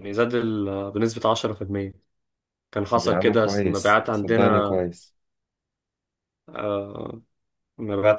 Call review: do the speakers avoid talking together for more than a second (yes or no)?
no